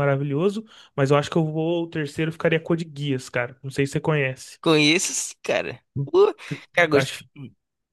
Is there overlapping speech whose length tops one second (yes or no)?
no